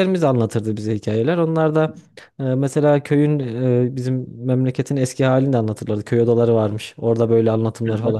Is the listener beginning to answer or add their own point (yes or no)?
yes